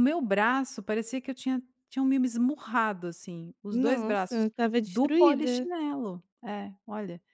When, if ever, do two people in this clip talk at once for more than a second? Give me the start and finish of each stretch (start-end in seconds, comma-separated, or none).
3.7-5.7